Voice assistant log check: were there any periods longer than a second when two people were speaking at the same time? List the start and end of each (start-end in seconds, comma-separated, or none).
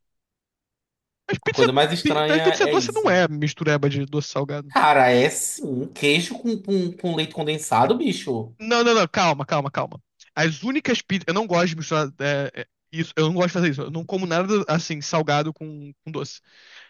1.4-3.2